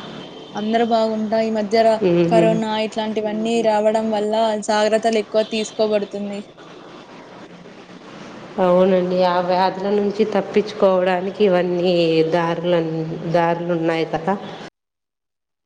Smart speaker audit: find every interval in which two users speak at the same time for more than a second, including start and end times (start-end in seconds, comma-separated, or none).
none